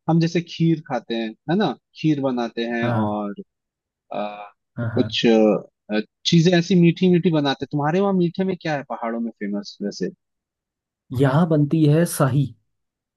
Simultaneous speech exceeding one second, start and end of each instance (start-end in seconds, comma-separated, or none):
none